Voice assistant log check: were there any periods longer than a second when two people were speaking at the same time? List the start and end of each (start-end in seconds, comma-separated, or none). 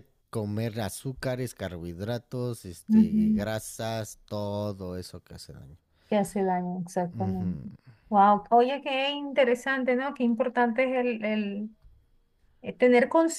none